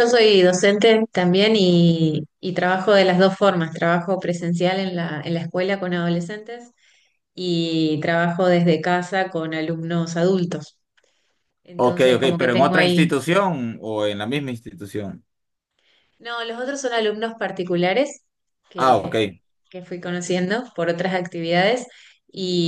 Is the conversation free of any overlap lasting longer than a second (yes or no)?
no